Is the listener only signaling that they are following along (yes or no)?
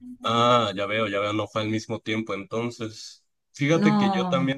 yes